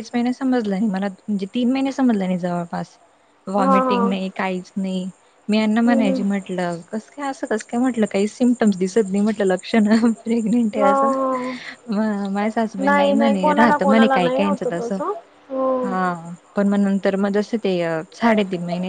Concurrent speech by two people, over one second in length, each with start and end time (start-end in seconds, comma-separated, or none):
12.8-14.9